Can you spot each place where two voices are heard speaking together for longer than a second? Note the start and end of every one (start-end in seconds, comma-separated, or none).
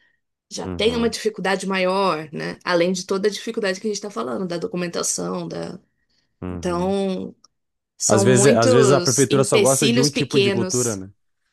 8.1-11.0